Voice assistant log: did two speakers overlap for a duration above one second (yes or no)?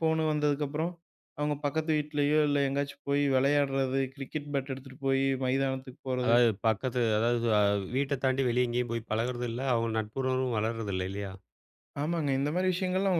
no